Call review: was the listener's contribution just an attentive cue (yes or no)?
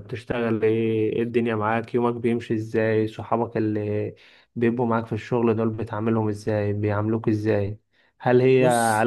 yes